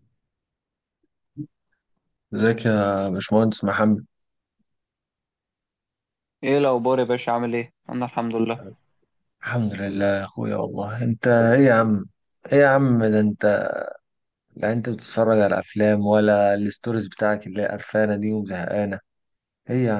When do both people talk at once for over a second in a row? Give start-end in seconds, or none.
none